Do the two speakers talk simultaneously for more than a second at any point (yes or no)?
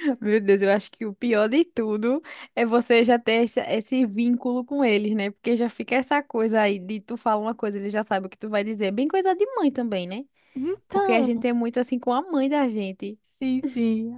no